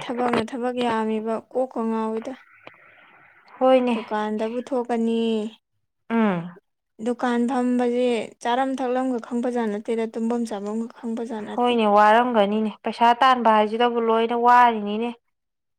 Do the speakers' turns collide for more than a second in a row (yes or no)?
no